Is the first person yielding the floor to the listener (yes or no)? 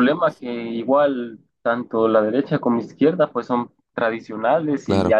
no